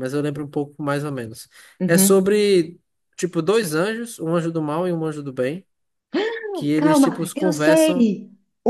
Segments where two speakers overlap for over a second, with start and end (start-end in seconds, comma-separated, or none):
6.8-8.1